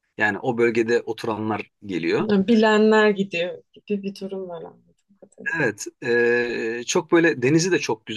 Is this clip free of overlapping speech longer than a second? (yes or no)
yes